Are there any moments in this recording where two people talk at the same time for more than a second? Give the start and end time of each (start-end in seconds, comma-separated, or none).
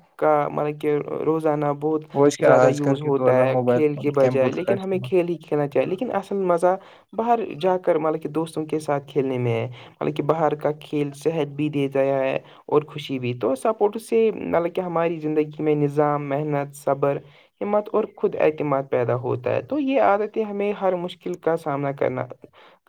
2.4-5.1